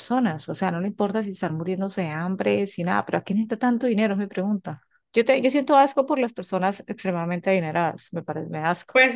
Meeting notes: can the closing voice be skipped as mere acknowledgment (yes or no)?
no